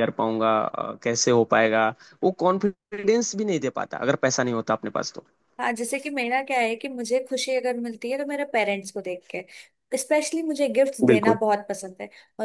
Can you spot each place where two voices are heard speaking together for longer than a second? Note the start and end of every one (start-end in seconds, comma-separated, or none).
none